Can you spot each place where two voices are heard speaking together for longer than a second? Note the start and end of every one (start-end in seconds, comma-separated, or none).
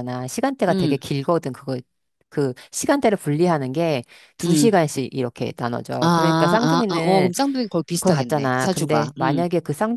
6.0-7.3, 8.0-9.4